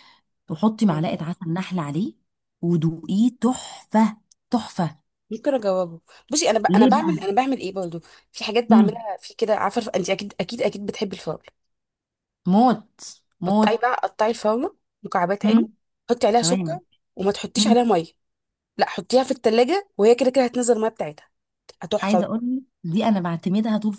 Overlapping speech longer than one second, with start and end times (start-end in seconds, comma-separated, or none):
none